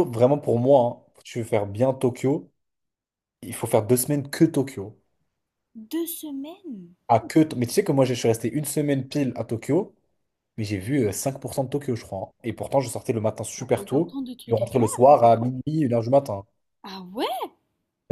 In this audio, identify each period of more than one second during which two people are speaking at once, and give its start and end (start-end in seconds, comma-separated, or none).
13.6-15.1